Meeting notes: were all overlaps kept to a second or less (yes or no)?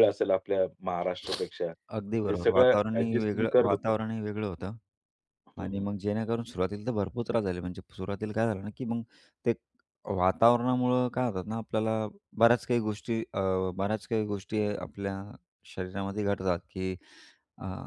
no